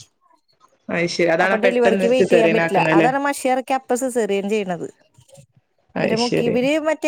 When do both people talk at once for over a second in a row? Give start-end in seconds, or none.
1.4-3.1